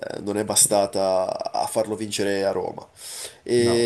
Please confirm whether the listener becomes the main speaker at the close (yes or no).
no